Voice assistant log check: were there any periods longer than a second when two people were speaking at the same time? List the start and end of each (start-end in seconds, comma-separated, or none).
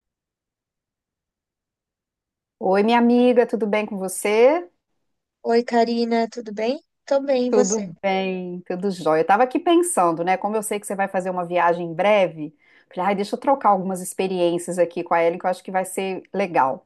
none